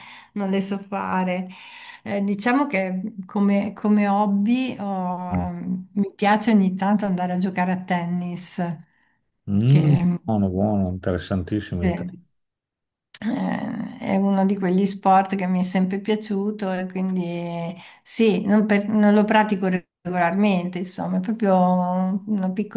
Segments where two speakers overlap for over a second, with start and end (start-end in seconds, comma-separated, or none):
none